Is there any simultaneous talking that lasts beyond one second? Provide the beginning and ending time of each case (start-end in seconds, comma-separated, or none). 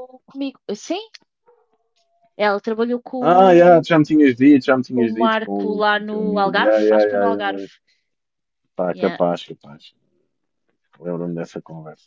5.0-7.6